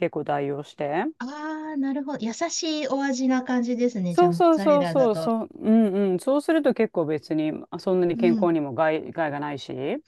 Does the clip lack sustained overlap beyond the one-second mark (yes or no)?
no